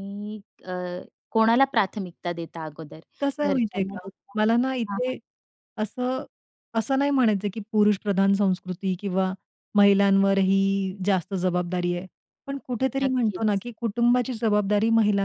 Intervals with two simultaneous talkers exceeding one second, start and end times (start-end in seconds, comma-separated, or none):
3.5-5.2